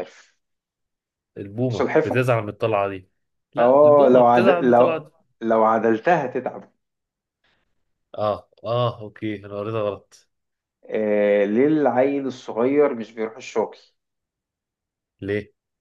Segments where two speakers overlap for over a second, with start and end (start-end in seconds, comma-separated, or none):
3.6-5.1